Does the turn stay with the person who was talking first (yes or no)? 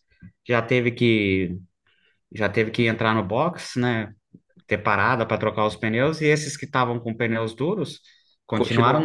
yes